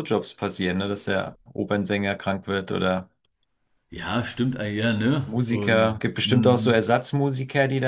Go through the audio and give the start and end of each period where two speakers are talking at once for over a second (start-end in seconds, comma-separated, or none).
5.2-6.8